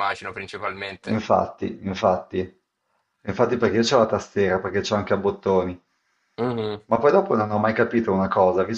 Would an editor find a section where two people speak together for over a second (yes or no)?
no